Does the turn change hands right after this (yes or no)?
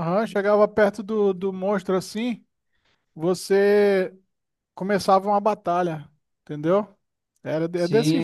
yes